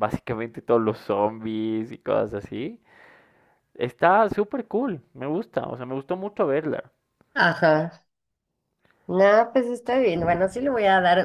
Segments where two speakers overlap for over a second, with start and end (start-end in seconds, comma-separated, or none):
none